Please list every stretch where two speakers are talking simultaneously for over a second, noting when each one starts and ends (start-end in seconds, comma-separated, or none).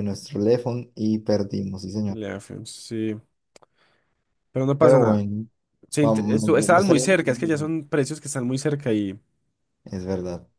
6.0-7.7